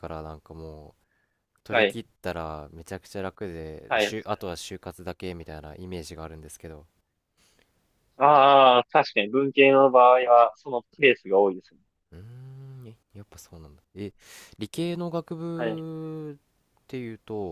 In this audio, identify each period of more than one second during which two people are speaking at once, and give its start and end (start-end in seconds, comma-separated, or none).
none